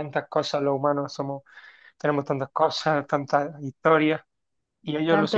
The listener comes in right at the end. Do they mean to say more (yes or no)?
no